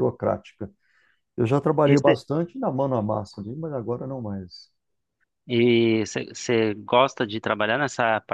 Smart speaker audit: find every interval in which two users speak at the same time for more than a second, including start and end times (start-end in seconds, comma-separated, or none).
none